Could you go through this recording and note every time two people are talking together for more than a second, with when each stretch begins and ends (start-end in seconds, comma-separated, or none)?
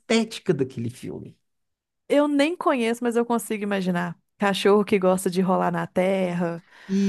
none